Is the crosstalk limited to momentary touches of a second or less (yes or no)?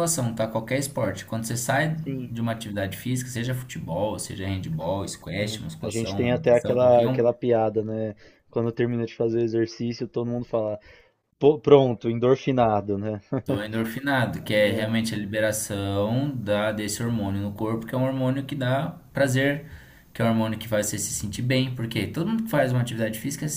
no